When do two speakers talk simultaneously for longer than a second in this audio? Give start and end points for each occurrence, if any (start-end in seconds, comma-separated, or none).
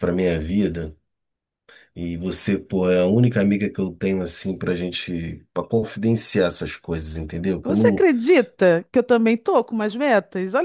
none